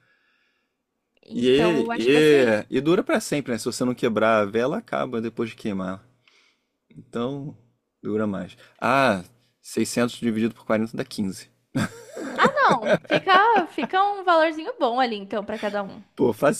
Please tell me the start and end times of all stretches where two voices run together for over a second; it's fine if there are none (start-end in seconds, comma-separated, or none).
1.3-2.6